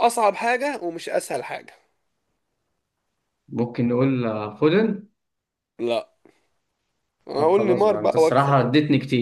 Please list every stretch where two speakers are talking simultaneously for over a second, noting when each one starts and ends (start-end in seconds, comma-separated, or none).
7.3-8.6